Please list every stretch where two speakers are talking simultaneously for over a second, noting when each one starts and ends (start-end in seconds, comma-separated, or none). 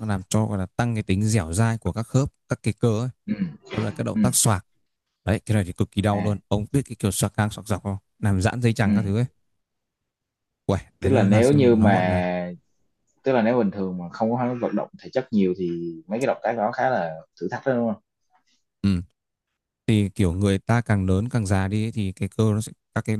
11.0-12.2